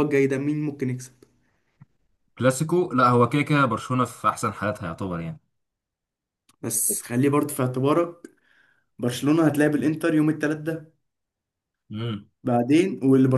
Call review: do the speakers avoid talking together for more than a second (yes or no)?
yes